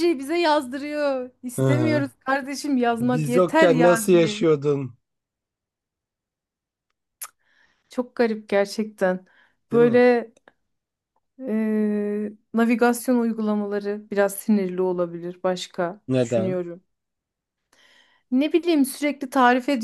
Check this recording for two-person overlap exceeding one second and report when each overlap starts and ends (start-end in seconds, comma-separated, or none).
3.0-4.5